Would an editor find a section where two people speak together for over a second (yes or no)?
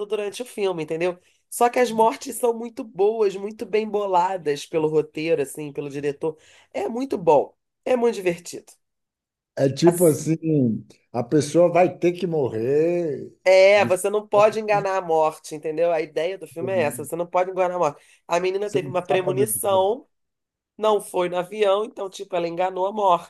yes